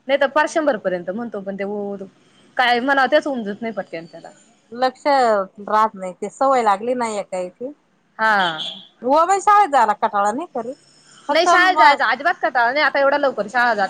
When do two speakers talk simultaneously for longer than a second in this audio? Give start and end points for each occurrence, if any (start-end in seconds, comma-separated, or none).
none